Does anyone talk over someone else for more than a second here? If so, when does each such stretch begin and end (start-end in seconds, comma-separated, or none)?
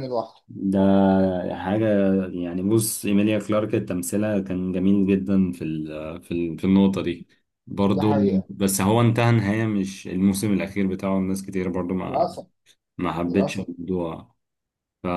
none